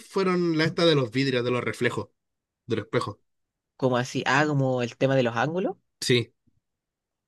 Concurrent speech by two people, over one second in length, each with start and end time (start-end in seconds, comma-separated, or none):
none